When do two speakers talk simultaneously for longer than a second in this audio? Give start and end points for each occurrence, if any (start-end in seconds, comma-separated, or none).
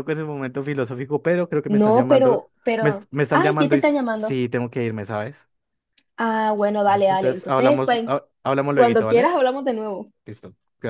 1.8-4.4, 6.8-8.1